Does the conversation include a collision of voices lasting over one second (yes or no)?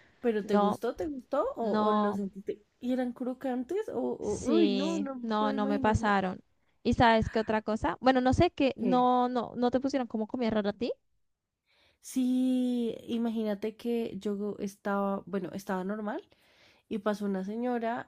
yes